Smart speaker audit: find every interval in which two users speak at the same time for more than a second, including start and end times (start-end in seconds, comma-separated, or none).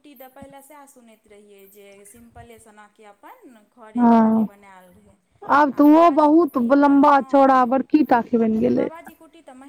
5.7-7.7